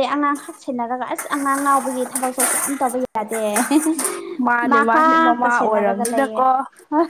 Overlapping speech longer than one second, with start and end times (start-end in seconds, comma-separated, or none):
4.7-6.4